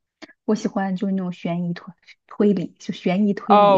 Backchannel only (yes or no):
no